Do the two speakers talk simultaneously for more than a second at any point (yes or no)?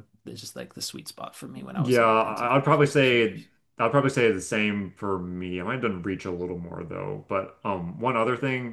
yes